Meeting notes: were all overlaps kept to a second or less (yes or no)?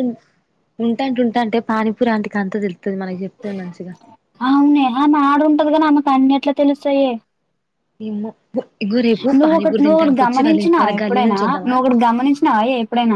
no